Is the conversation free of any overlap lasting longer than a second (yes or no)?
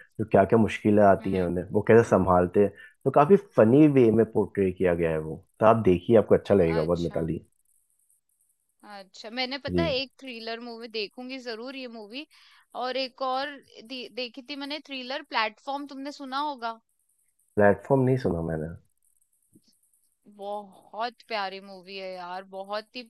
yes